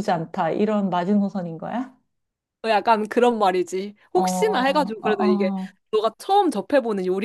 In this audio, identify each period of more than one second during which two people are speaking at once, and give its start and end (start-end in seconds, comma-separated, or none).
4.1-5.5